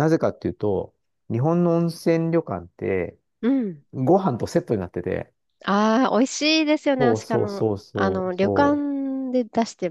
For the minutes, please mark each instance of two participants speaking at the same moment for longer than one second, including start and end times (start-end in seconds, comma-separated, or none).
7.0-8.9